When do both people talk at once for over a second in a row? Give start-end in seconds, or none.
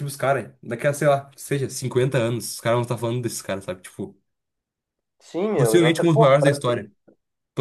5.6-6.9